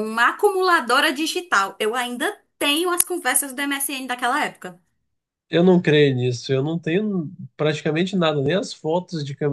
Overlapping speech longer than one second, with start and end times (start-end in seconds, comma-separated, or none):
none